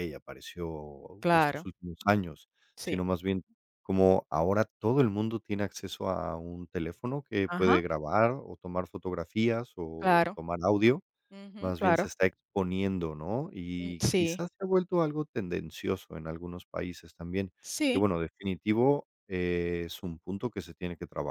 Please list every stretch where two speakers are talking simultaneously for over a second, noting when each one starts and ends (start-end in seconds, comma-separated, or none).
none